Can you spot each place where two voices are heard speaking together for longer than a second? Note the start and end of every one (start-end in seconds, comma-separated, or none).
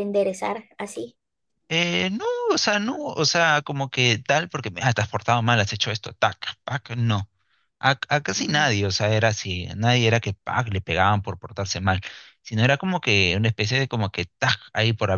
none